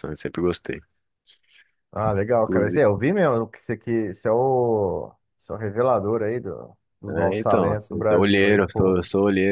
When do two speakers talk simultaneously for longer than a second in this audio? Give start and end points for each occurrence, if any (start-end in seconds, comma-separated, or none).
7.1-9.0